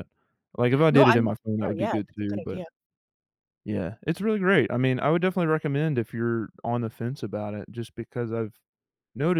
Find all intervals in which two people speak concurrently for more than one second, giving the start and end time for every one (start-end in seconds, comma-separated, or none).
0.9-2.6